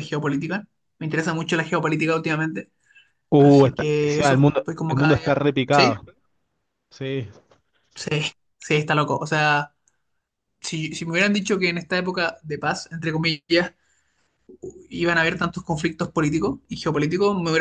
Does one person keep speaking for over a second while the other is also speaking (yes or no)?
yes